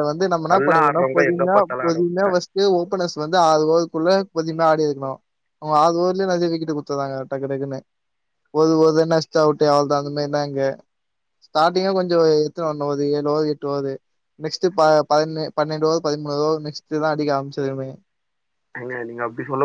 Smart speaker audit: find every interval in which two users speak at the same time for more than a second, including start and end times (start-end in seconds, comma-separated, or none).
0.5-2.2